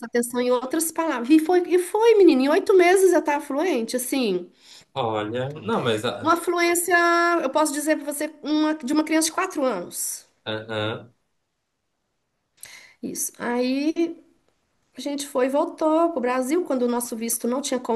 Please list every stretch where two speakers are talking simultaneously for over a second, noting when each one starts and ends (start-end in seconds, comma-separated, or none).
none